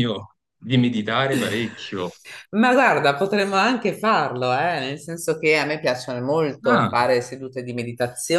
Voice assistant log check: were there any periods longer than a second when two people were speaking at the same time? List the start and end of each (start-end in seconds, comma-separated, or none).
none